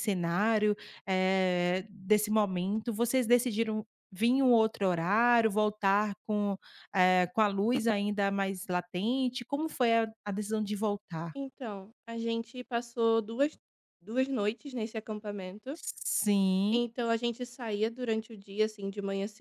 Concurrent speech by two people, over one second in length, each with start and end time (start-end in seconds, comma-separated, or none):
none